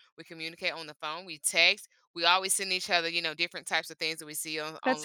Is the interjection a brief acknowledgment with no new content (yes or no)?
yes